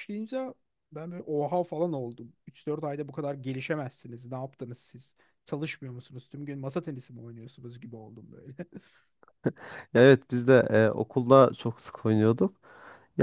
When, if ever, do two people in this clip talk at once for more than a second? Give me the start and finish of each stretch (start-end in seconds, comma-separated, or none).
none